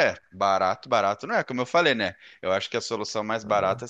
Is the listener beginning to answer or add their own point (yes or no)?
no